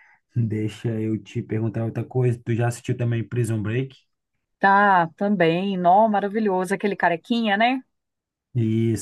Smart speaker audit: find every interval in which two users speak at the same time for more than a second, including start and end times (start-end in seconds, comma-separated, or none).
none